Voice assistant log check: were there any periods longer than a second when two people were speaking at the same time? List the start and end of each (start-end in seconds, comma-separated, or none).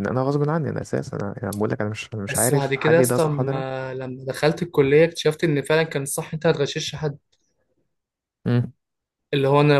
2.3-3.6